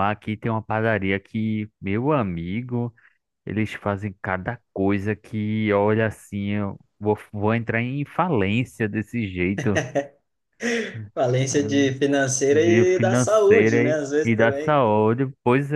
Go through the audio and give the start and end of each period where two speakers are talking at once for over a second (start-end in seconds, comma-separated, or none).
12.5-14.8